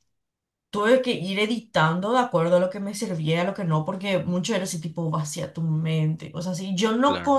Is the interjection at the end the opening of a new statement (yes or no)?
no